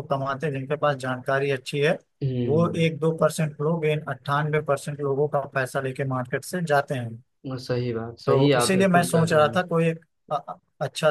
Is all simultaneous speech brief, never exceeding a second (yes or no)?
no